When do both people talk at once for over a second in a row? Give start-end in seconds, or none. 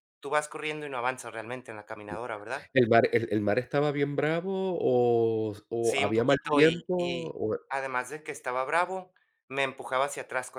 5.8-7.3